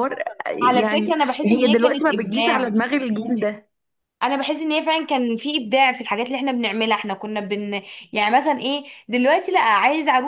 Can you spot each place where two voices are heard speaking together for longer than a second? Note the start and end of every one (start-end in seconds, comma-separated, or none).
0.6-2.6